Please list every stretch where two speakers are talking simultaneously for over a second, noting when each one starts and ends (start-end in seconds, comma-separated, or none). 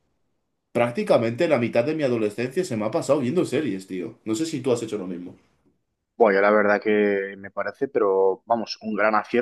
none